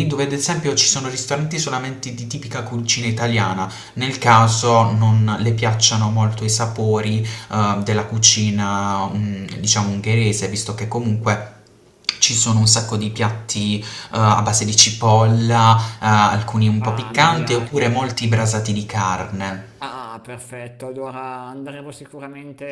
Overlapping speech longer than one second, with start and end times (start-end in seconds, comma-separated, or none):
16.8-18.1